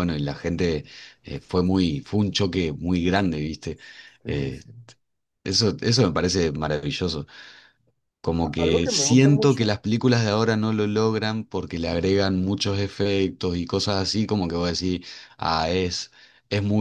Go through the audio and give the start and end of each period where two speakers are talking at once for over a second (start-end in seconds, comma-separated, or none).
8.4-9.7